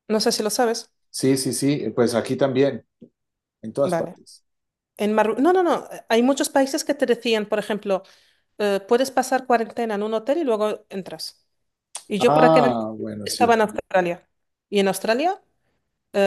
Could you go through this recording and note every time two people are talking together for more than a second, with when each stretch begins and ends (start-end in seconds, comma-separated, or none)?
12.2-13.6